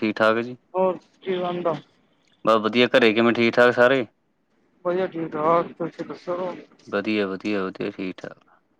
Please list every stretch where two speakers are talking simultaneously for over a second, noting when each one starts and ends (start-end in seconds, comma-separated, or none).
none